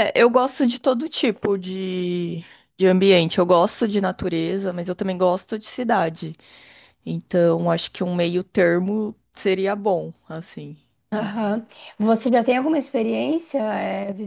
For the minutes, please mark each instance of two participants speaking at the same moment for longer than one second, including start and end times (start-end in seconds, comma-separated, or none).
none